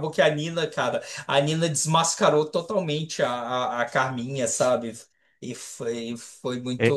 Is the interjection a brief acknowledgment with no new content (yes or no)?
no